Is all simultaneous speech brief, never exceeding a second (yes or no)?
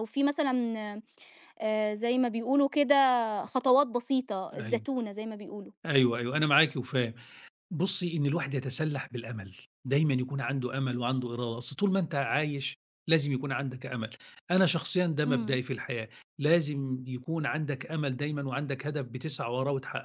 yes